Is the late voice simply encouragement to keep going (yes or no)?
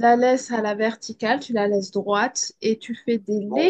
yes